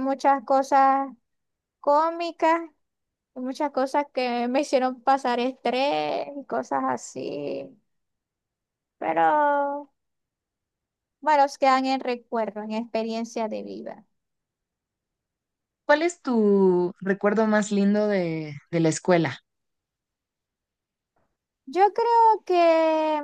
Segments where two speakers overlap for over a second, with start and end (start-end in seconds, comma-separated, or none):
none